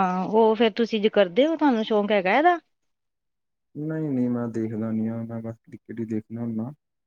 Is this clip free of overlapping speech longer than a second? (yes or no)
yes